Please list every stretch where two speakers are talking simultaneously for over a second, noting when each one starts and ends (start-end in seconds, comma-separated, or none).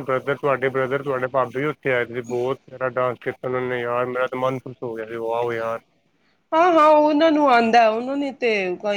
none